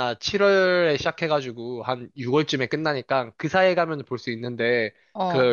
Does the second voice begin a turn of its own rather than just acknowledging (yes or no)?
no